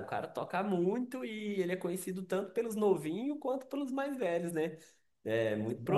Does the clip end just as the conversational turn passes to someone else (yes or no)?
no